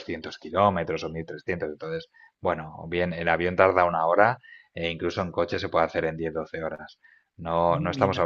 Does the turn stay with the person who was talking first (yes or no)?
yes